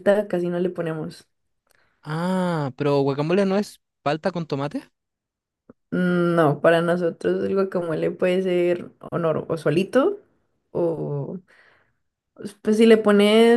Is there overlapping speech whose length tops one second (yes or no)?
no